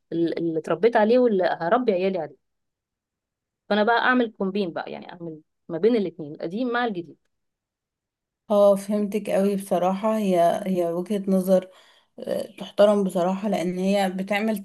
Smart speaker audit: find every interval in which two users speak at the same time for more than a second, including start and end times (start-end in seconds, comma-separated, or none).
none